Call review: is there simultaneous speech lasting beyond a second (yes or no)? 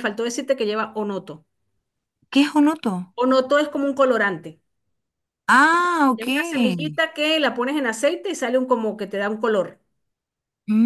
no